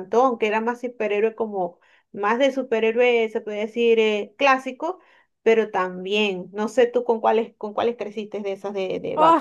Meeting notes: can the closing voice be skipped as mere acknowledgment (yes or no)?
no